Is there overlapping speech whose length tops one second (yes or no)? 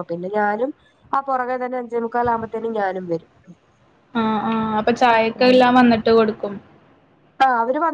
no